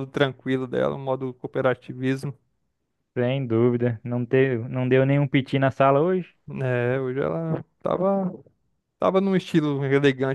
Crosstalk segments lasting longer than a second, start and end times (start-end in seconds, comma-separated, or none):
none